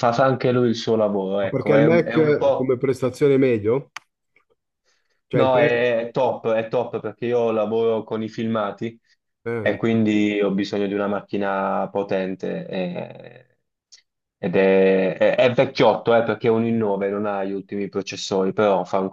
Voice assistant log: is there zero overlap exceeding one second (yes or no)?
no